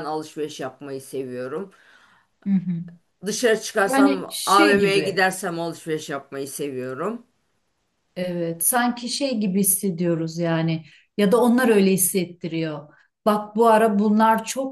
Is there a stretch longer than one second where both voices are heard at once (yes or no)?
yes